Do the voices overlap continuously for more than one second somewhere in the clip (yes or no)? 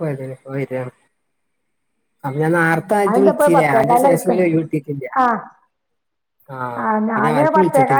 yes